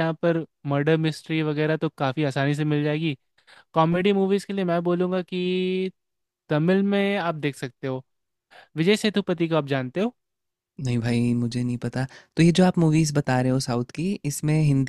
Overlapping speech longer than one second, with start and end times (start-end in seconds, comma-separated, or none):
none